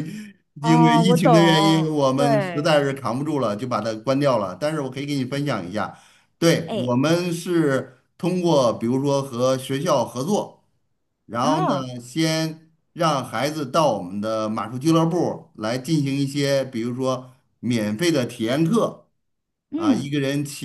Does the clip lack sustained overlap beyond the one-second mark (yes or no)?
no